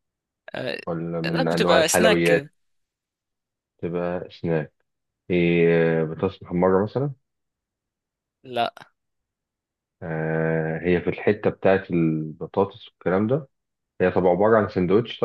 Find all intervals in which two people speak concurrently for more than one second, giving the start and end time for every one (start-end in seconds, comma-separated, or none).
1.2-2.5